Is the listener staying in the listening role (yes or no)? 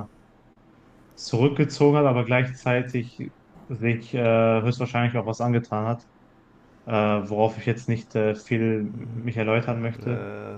yes